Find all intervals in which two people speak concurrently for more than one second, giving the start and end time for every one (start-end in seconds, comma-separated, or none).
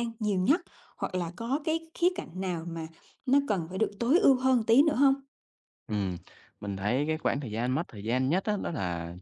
none